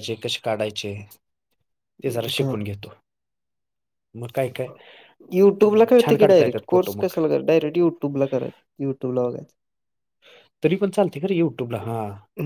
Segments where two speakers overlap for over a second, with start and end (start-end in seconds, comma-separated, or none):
5.6-7.1